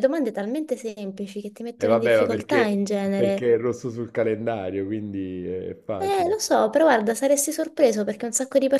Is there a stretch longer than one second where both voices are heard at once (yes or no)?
yes